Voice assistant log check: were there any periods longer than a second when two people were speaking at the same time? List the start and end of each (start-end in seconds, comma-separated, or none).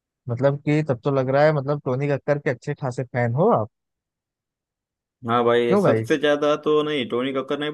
none